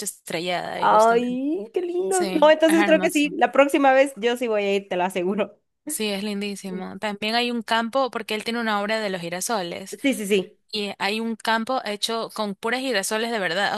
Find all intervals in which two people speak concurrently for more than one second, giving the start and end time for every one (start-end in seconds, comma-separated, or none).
2.1-3.4